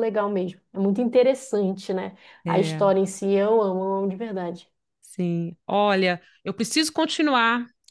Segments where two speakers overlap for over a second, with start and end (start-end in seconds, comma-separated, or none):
none